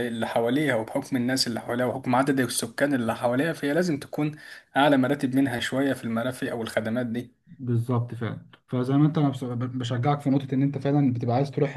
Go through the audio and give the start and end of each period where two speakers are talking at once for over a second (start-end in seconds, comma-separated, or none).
none